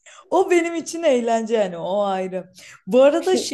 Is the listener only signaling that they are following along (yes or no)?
yes